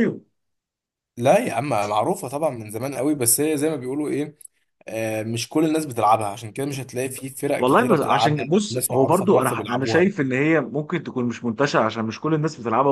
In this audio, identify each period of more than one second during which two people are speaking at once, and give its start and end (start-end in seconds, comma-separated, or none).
7.6-10.0